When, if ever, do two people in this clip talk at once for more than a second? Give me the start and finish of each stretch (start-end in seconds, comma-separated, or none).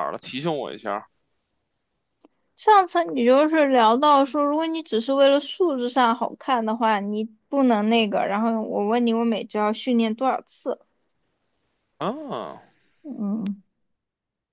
none